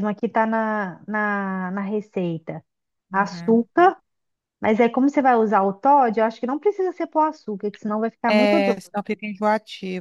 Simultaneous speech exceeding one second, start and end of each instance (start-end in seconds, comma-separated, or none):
none